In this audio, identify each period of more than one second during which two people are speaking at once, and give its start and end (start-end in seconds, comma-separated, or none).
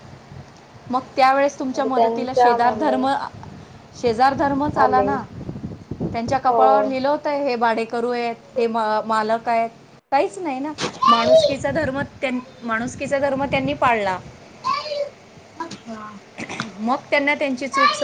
1.6-3.0